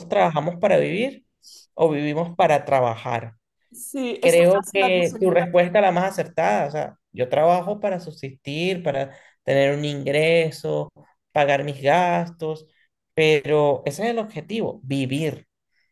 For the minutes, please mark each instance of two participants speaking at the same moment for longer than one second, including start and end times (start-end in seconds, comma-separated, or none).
4.2-5.5